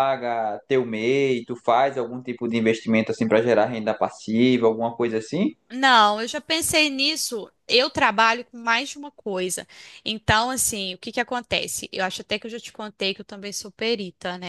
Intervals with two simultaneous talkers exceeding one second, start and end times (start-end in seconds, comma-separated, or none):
none